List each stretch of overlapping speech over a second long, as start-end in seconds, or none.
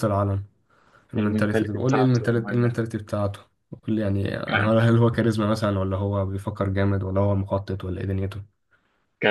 1.2-2.8